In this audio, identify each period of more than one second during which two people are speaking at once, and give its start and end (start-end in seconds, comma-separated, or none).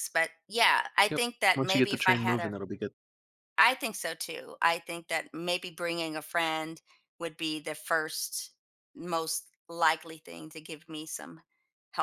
1.1-2.5